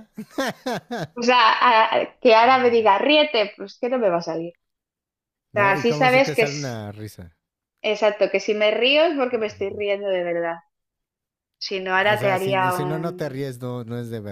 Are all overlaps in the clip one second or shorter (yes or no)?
no